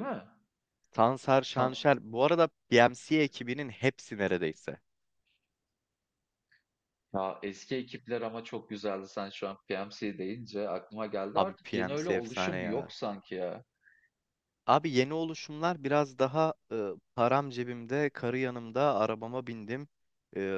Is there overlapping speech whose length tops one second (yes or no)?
yes